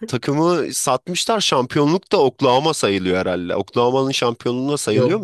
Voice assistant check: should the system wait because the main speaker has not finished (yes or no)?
no